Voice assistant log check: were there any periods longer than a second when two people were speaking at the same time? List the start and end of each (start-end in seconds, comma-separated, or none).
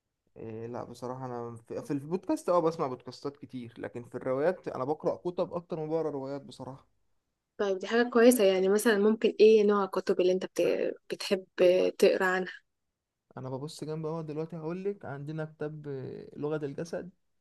none